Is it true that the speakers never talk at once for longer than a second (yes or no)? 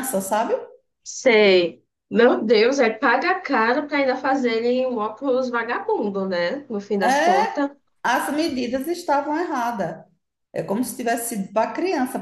yes